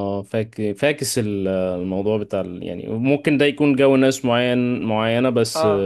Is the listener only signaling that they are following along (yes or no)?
yes